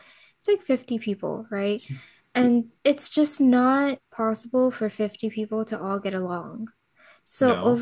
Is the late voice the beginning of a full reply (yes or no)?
no